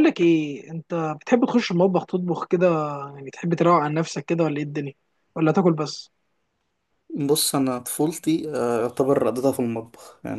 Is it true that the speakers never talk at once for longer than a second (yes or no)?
yes